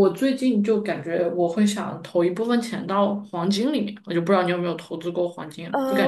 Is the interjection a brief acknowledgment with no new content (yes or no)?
no